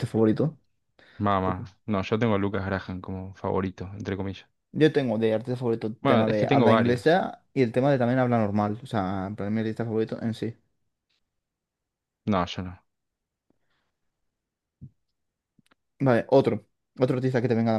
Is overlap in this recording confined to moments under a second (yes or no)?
no